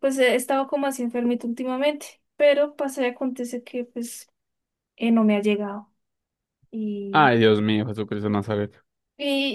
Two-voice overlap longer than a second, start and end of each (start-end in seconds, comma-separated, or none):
none